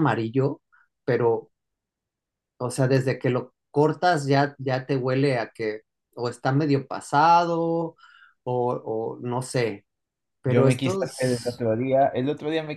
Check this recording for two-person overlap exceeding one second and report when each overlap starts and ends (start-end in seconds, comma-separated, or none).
10.4-11.7